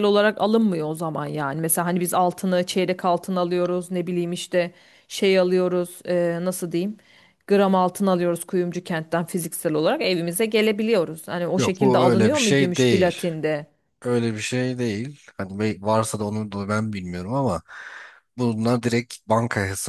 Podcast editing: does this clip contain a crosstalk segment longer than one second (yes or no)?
yes